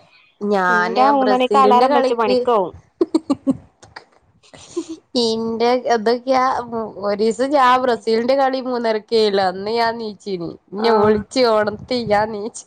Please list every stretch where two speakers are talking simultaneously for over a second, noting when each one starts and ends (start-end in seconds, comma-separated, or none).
0.7-2.4